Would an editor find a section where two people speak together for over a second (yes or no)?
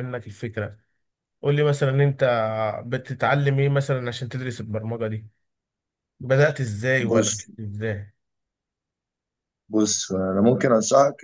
no